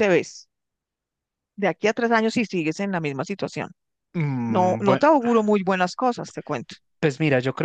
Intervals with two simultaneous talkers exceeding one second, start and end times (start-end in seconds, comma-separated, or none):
none